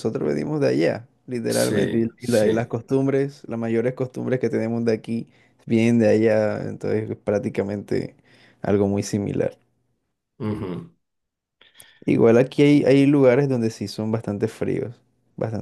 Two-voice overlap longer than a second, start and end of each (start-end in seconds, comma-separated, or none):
1.5-2.8